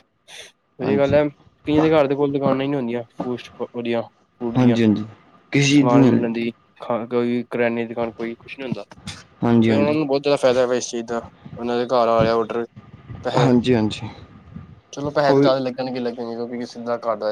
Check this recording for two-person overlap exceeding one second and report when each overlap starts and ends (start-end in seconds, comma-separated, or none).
none